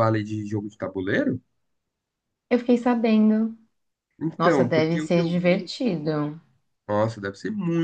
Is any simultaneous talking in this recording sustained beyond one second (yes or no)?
yes